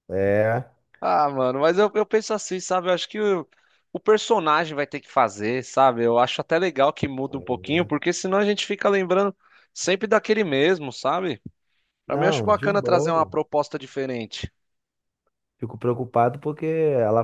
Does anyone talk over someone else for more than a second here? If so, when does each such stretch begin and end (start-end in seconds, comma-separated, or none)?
12.1-13.3